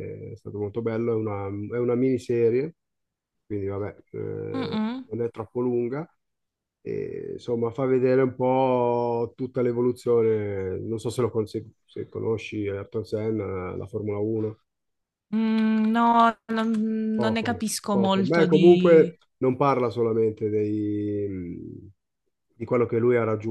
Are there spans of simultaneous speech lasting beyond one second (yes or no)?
yes